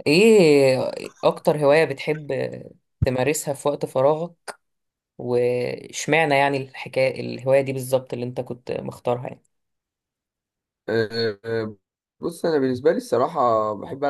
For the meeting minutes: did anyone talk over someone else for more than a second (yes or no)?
no